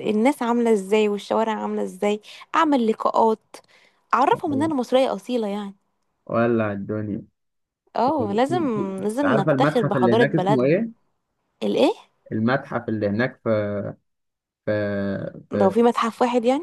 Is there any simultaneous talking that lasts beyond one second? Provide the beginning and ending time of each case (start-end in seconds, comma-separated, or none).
9.0-10.8